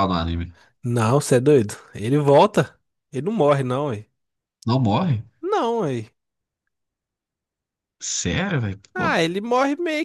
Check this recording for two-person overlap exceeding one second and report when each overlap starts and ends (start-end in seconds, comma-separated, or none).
none